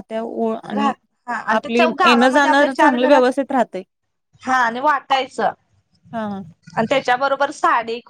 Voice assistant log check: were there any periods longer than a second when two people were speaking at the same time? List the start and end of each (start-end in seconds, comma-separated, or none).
1.6-3.2